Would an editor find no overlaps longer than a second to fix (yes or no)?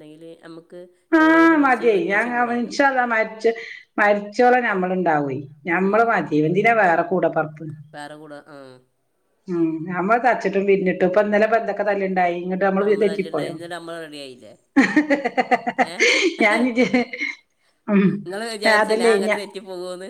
no